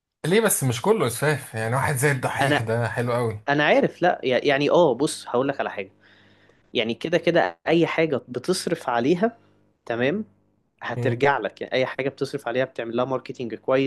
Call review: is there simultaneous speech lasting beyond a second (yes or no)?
no